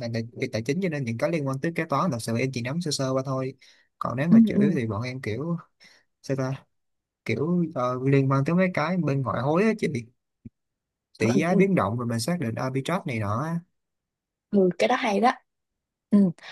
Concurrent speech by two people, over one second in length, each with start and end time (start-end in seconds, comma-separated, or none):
none